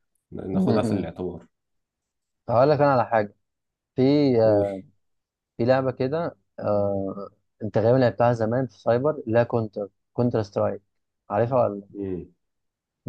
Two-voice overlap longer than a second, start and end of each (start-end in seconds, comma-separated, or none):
none